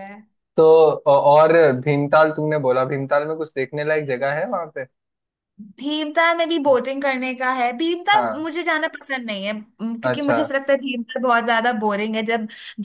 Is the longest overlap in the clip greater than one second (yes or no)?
no